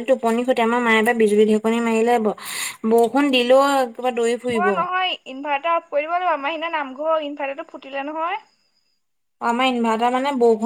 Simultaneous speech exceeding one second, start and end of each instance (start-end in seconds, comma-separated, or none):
none